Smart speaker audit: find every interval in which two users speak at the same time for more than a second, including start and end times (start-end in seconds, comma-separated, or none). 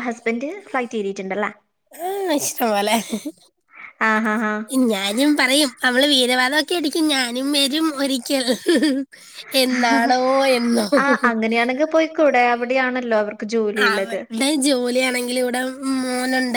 none